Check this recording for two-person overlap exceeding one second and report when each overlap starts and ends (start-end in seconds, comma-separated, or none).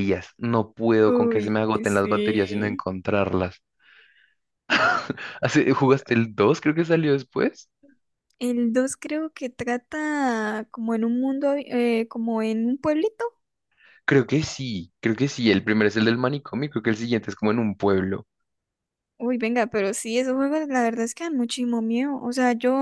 1.1-2.8